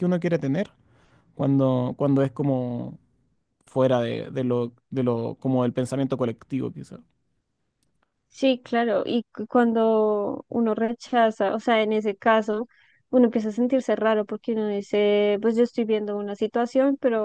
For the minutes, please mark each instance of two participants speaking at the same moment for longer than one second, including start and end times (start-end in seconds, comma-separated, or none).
none